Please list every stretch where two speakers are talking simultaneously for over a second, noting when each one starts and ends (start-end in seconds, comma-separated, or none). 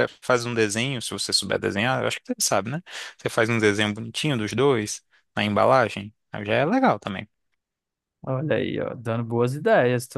none